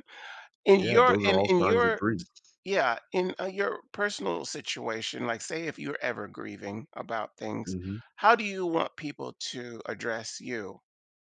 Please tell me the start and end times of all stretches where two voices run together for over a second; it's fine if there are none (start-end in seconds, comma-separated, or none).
0.8-2.0